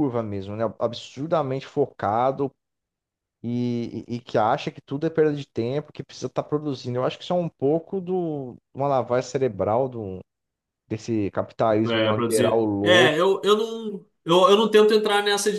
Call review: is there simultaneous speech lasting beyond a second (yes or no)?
yes